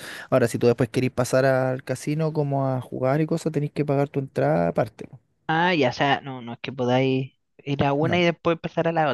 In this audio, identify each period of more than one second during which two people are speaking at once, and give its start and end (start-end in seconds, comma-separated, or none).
none